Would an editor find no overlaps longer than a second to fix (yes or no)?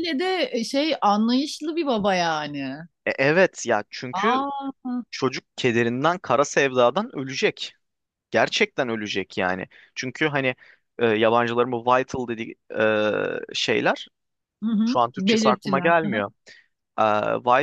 no